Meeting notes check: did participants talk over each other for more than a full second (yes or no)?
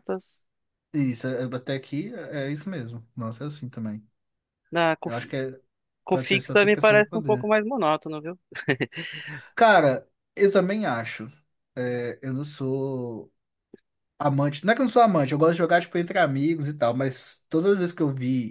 yes